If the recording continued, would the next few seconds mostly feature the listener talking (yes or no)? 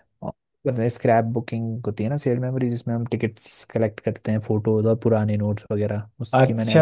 yes